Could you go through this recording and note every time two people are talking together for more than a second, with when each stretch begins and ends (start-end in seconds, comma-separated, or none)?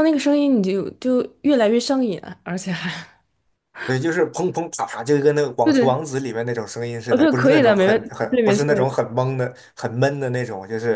7.1-8.9